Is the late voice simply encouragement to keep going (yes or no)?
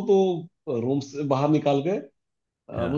yes